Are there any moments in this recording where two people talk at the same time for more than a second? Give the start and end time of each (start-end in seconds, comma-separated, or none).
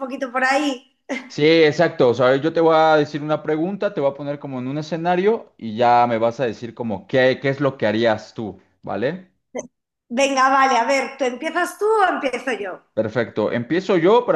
none